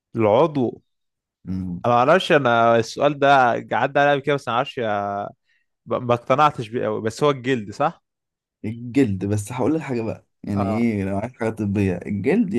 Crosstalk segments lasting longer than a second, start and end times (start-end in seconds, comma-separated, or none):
none